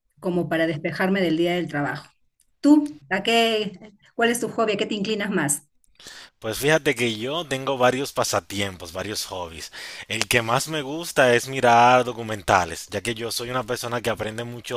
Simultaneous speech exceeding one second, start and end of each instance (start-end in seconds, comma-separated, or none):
none